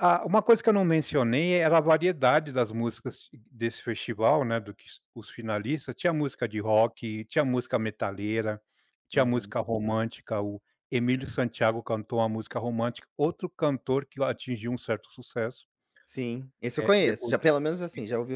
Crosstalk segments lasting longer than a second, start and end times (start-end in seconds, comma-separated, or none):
none